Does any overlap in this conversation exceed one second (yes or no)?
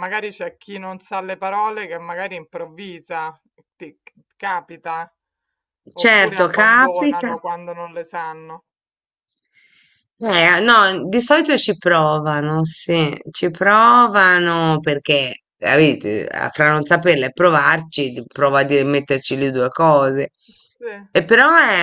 yes